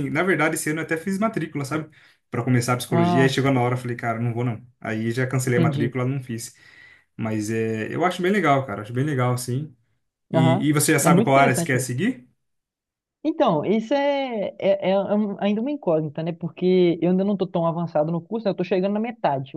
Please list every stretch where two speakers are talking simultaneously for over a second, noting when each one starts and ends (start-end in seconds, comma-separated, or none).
10.3-11.9